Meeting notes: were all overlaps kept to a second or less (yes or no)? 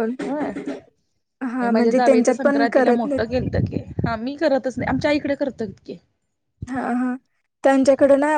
no